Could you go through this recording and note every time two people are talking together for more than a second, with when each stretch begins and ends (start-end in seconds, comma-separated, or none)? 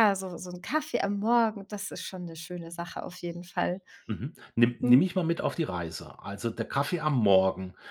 none